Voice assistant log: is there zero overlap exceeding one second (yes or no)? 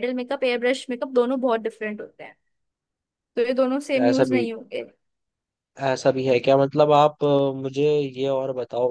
yes